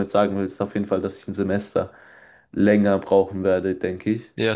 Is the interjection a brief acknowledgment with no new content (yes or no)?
no